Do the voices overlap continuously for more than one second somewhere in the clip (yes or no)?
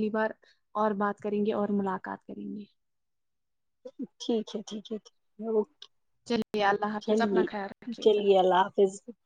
no